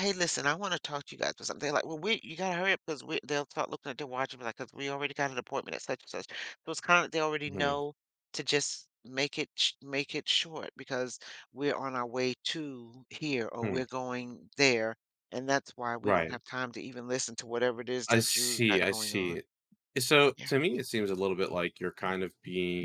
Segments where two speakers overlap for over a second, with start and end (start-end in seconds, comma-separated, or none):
18.1-19.4